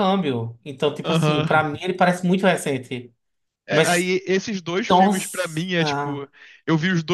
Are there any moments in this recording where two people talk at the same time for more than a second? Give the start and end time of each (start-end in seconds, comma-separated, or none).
none